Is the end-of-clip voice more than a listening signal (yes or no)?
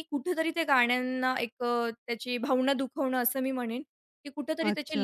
no